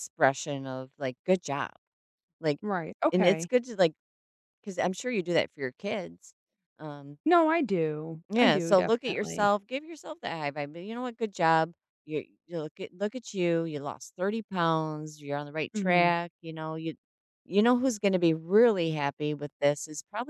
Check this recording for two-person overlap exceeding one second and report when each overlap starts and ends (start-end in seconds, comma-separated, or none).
8.3-9.5